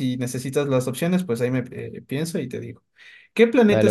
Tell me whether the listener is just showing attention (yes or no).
yes